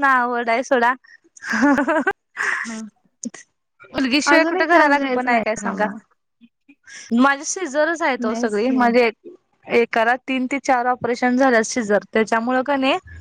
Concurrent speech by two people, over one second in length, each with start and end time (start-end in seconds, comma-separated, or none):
4.3-5.8